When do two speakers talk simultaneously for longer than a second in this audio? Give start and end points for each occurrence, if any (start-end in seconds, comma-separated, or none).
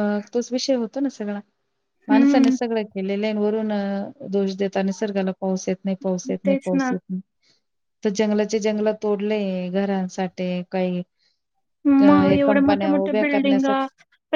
12.0-13.7